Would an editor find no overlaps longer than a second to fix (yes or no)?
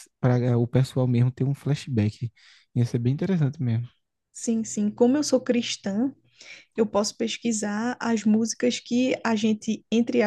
yes